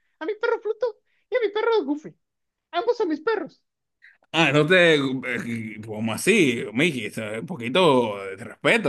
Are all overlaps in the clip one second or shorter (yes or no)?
yes